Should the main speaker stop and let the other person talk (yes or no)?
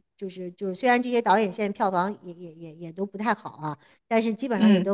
no